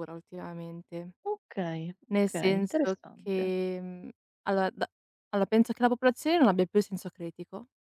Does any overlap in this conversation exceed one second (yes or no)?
yes